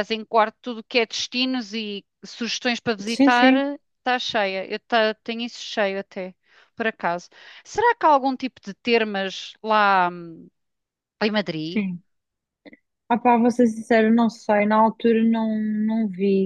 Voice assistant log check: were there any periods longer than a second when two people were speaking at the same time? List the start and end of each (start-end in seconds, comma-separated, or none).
none